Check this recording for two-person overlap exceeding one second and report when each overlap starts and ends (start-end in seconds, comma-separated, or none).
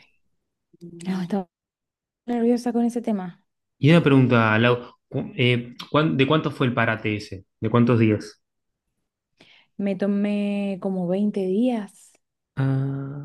none